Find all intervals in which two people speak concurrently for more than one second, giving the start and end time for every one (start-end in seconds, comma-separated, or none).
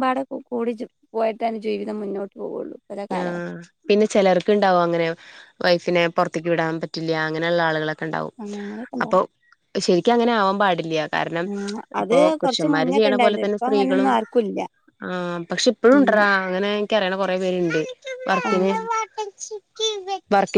12.1-14.1